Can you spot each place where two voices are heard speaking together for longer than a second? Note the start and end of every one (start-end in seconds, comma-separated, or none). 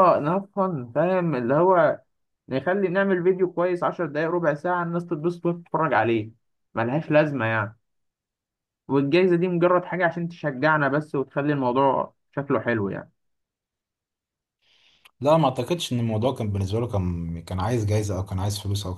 none